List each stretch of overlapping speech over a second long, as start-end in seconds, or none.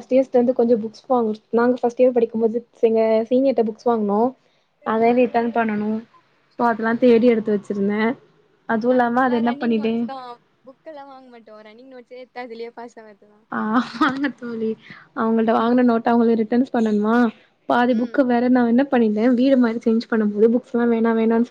none